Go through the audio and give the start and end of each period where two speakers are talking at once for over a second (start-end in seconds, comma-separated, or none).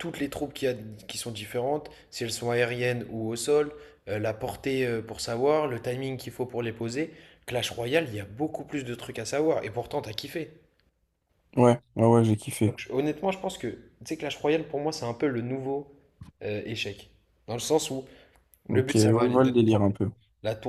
18.7-19.9